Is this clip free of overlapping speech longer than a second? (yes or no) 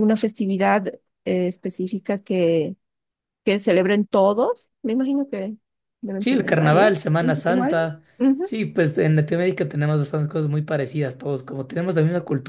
no